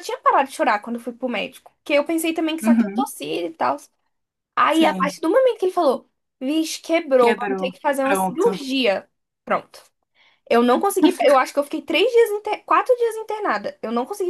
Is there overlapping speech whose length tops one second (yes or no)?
yes